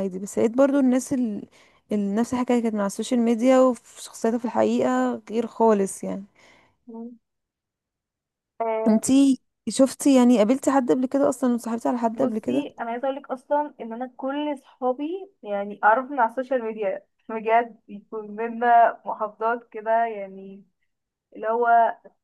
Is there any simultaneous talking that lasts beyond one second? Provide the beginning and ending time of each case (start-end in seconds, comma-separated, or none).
none